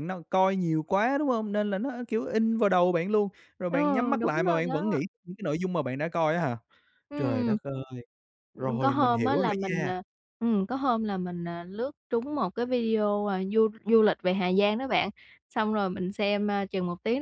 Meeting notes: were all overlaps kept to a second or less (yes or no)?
no